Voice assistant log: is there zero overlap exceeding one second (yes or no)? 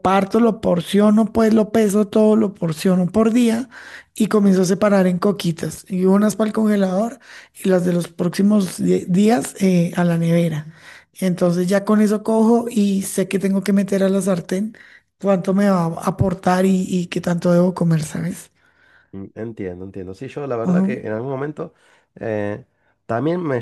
yes